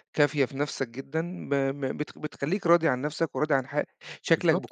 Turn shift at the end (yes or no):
no